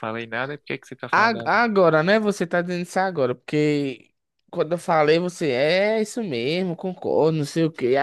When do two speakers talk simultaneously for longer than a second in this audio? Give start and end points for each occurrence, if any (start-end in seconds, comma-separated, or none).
none